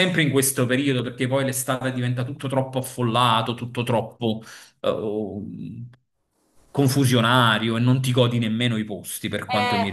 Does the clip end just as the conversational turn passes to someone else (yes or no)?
yes